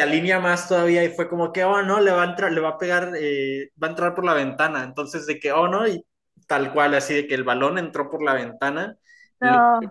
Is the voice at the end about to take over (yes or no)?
no